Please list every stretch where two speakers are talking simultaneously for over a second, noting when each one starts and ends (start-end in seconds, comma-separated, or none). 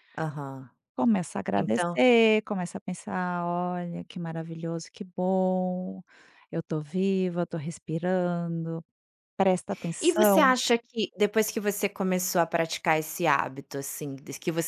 none